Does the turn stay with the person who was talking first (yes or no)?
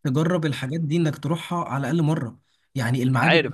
yes